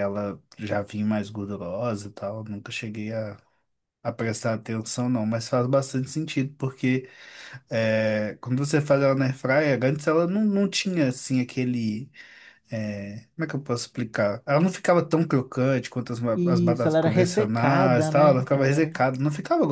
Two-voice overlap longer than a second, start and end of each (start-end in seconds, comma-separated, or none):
16.3-18.9